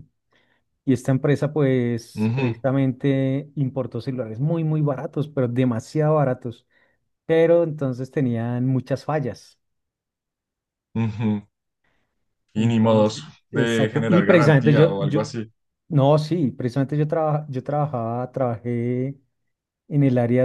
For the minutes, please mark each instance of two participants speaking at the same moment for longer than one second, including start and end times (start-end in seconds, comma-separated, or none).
12.6-15.2